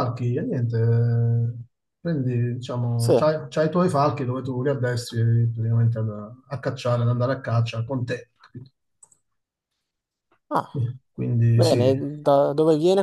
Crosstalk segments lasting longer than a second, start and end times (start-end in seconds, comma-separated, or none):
none